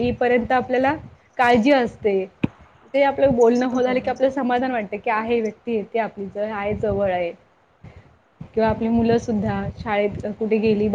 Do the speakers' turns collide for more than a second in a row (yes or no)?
yes